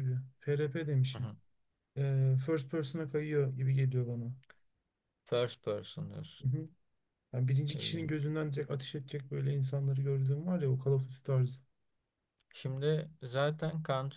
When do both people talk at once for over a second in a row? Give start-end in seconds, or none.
none